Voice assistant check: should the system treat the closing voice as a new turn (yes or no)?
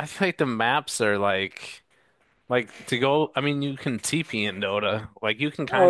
yes